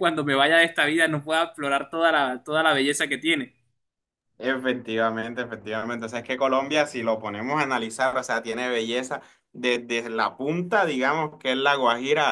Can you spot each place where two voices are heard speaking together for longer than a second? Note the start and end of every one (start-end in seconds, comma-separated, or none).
none